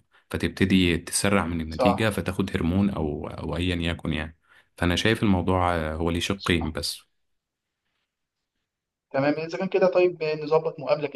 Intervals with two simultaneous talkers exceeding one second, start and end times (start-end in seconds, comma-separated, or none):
none